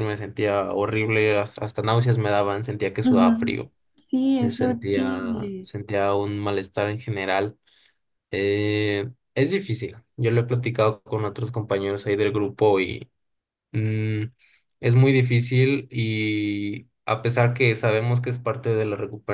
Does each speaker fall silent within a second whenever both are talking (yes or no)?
no